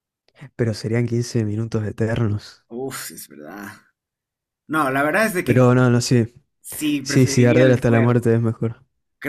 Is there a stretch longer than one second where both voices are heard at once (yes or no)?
yes